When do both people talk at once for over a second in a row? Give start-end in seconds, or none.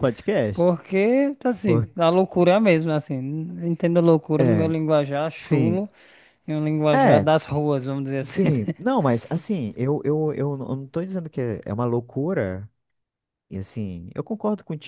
none